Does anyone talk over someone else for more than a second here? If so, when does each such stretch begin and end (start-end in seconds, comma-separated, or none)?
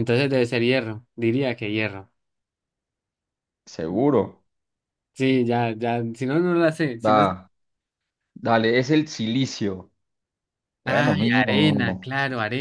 10.8-12.1